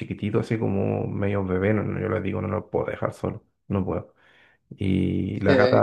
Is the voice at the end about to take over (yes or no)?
no